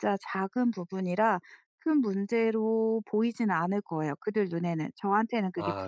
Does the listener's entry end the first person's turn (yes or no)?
yes